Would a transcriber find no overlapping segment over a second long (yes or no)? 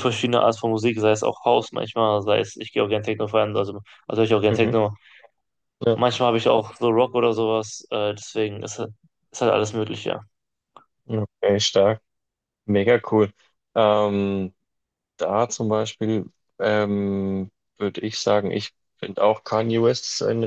yes